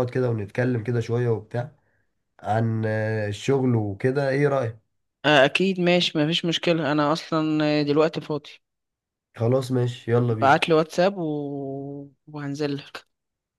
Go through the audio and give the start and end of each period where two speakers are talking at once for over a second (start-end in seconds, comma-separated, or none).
none